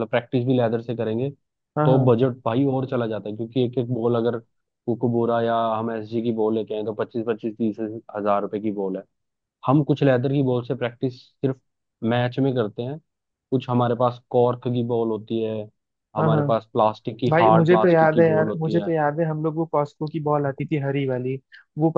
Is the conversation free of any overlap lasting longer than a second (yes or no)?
no